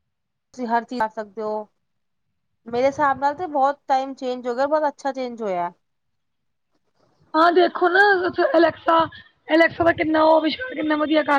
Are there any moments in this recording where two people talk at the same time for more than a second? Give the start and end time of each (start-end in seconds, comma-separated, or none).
none